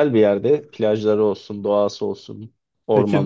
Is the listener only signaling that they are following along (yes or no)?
no